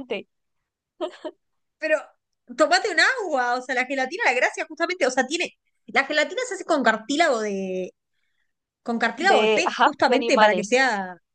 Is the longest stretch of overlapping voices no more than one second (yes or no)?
no